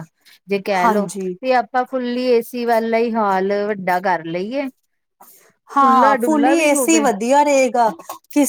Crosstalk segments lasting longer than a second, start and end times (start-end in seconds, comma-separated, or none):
5.8-7.0